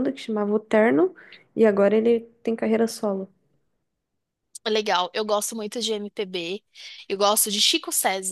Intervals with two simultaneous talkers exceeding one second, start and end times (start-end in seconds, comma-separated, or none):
none